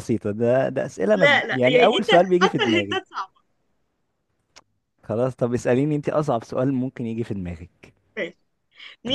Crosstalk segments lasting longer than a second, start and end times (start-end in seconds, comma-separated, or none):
1.1-3.0